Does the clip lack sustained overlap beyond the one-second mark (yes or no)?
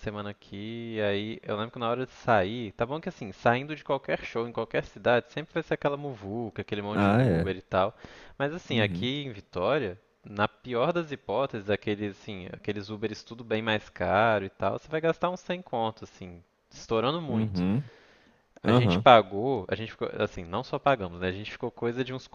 yes